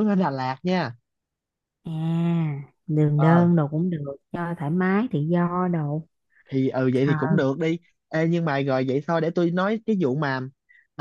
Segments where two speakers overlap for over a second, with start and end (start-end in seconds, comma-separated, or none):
none